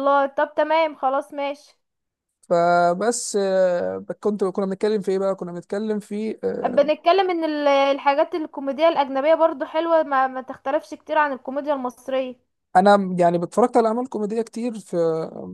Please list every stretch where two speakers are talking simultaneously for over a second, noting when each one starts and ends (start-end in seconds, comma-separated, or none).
none